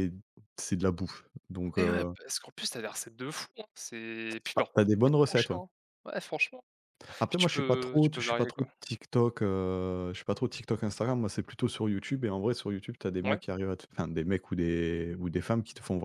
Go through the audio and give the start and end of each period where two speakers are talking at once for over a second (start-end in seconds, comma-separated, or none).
7.3-8.7